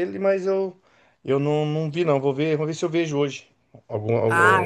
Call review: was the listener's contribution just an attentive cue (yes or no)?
no